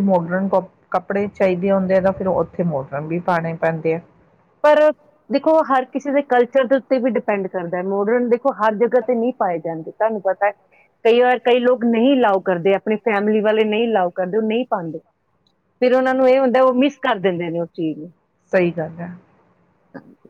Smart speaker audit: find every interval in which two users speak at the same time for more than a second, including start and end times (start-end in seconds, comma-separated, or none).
none